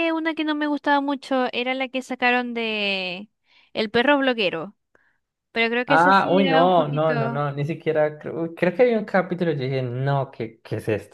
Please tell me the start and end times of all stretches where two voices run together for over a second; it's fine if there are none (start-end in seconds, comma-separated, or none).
5.9-7.4